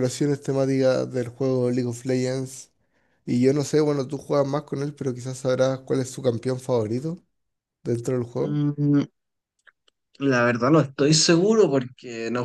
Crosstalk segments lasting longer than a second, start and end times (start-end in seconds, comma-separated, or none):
none